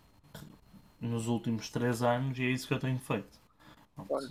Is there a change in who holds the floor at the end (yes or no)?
yes